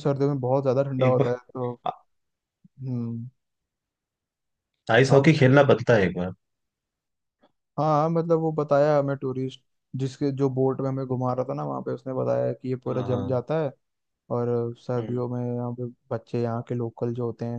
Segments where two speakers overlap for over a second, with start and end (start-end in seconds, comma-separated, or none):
none